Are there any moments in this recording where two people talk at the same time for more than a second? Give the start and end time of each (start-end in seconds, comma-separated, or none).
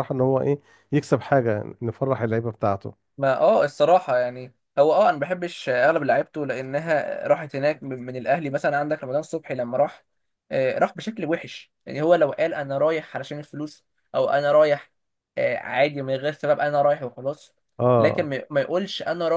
none